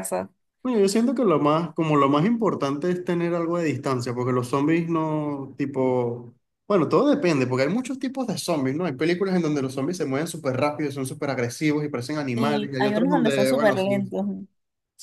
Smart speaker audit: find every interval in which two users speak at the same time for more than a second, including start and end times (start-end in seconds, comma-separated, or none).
12.3-13.9